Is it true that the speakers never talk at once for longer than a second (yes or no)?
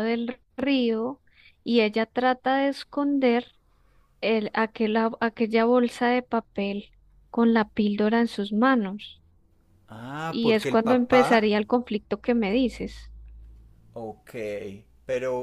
no